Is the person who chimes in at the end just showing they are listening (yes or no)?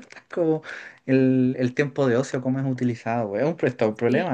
no